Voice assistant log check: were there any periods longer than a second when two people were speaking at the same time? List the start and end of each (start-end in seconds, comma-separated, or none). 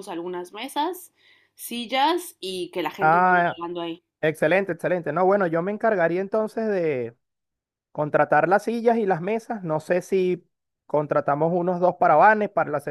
none